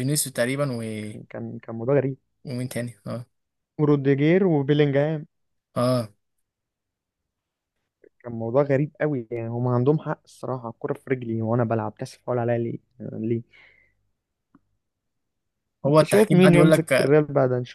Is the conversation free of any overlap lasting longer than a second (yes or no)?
no